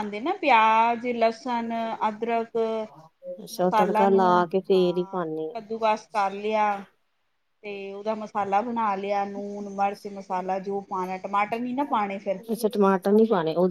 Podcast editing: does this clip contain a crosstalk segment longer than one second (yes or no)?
no